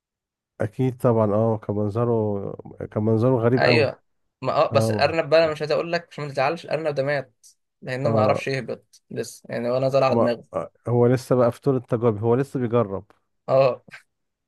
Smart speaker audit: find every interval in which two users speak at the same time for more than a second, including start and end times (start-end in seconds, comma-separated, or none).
none